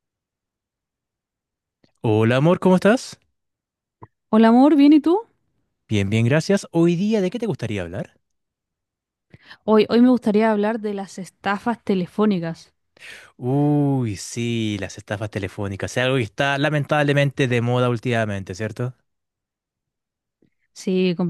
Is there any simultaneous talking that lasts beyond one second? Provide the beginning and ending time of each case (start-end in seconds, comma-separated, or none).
none